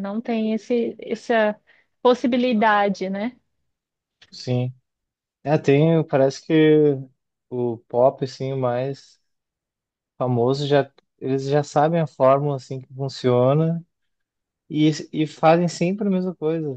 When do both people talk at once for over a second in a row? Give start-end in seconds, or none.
none